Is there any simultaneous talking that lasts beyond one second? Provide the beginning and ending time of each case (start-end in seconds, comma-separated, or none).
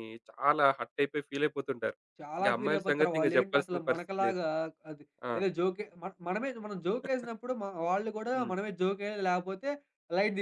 2.4-4.4